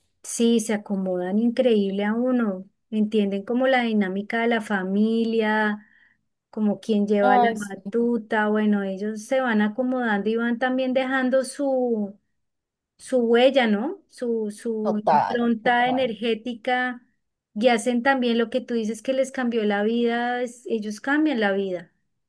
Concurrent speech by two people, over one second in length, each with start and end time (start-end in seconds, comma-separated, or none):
14.8-16.1